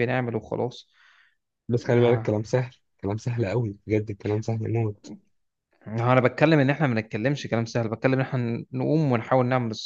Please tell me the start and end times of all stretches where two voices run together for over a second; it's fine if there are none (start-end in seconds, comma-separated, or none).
none